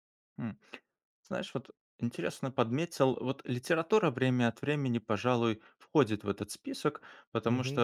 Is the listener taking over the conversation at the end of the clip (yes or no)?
yes